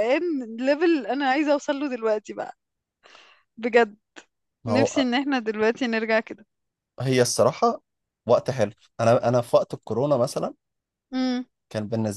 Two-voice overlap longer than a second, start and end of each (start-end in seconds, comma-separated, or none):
none